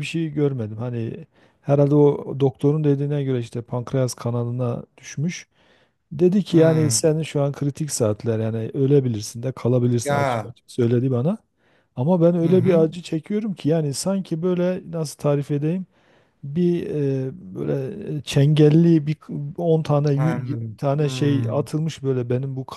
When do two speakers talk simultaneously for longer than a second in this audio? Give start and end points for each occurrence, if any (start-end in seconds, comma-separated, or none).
20.1-21.7